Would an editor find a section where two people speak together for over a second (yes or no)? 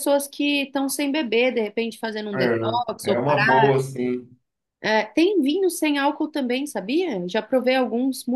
yes